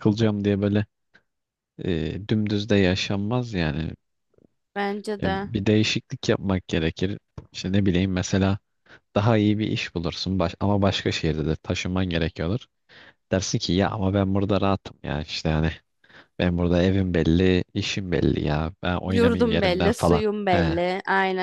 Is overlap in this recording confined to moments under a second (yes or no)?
no